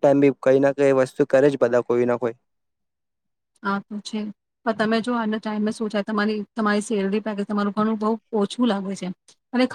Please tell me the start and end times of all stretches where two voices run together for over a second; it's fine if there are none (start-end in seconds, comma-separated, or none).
none